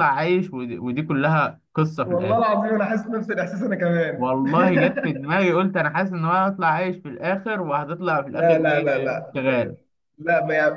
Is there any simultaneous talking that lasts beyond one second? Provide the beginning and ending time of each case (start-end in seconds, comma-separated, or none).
none